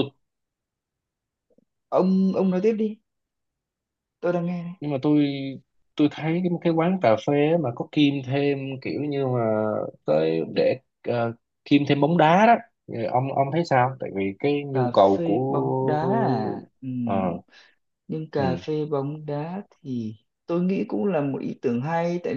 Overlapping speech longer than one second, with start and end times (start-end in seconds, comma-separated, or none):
14.7-16.6